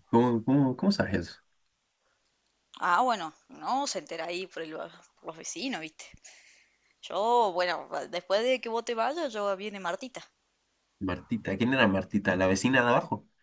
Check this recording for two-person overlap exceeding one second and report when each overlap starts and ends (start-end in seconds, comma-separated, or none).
none